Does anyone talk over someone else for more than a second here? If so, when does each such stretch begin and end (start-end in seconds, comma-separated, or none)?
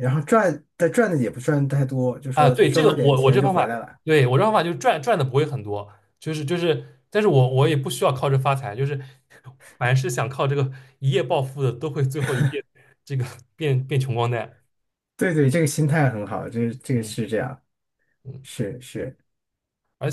2.3-4.0